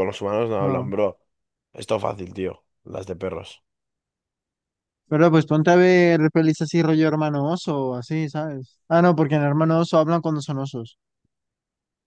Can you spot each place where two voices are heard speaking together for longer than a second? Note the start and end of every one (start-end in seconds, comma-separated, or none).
none